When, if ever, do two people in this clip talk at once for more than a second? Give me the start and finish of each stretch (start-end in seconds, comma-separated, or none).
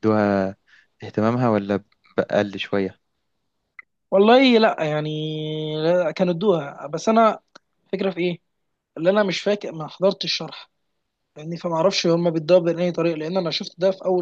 none